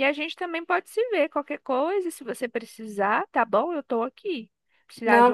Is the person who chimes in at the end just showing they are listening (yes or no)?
yes